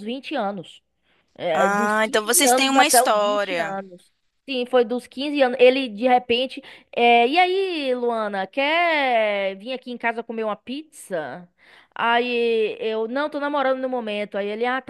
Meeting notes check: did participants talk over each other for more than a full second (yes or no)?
yes